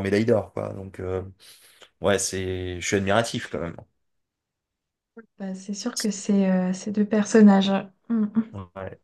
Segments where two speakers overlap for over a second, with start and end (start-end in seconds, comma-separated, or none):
none